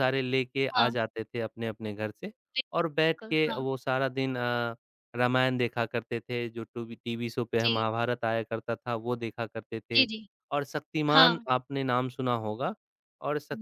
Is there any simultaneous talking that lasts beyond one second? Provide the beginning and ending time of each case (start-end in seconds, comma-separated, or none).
none